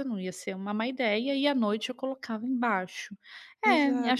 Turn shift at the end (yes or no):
yes